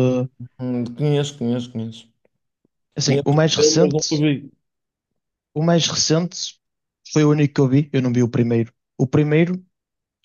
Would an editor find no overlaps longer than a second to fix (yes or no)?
no